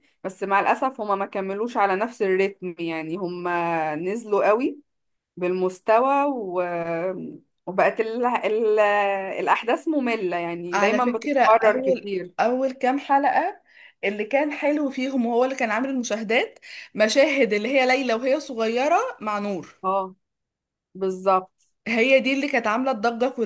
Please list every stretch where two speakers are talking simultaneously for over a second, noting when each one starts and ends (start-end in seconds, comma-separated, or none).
10.7-12.3